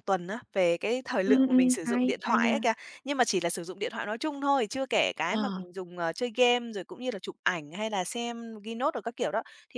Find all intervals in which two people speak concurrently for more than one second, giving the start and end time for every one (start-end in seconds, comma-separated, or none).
1.2-2.6